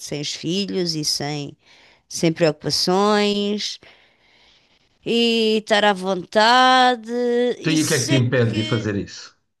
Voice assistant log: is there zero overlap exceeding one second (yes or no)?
no